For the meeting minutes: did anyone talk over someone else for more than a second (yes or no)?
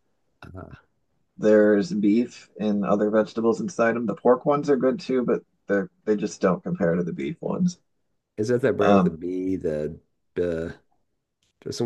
no